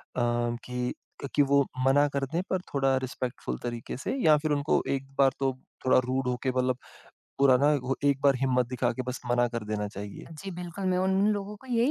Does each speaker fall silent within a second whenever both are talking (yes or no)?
yes